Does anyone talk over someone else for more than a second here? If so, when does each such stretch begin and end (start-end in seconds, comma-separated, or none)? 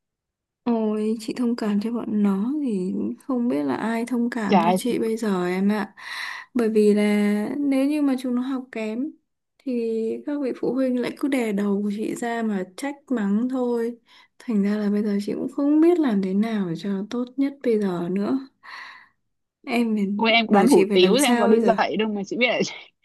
20.5-21.8